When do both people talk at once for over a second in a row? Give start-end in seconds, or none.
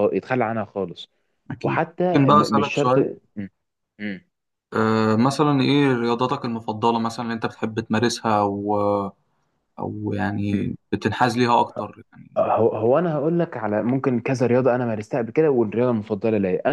1.6-3.1